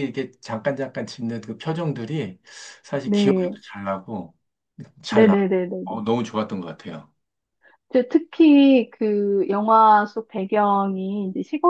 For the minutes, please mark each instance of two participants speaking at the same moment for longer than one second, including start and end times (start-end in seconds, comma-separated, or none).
none